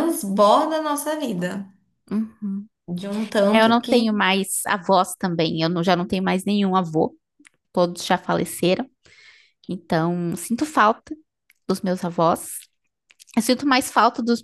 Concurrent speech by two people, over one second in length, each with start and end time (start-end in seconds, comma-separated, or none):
none